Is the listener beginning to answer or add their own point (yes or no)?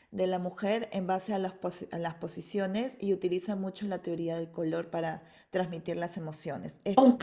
yes